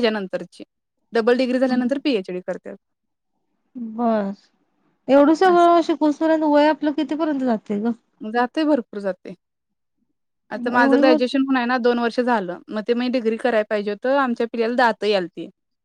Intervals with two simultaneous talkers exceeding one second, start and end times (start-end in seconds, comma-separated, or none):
none